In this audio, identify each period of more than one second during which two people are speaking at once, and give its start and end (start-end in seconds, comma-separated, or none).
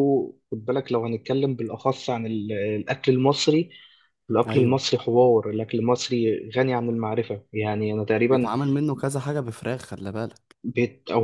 none